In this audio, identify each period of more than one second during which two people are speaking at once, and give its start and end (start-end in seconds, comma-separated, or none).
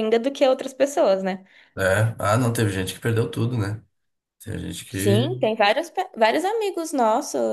none